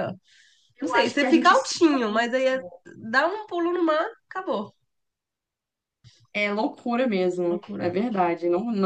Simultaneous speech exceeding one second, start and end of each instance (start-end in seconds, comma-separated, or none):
0.8-2.3